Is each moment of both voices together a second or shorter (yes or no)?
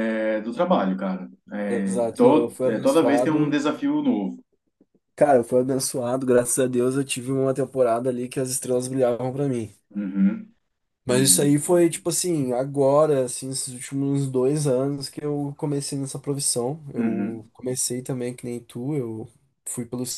no